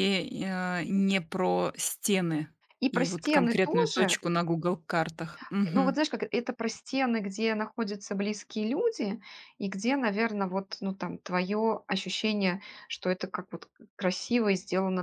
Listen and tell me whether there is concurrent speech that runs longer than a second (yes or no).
yes